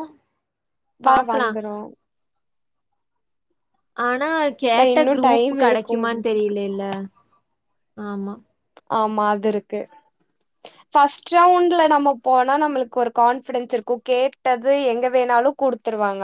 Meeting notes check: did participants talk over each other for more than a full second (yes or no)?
yes